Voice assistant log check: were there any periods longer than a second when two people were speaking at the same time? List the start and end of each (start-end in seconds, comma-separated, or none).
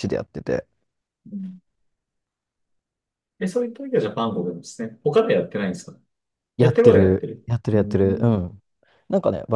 6.6-8.4